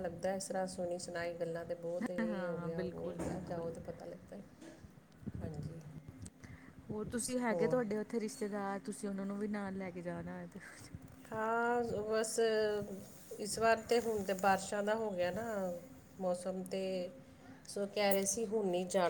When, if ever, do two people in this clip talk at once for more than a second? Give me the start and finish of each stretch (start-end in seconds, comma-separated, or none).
2.3-3.7